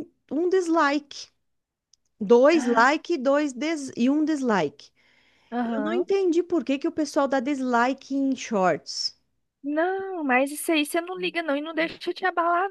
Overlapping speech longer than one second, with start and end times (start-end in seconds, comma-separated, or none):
none